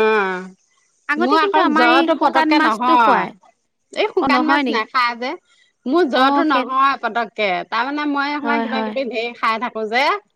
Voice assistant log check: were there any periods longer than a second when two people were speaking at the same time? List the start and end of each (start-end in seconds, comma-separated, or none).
1.2-3.3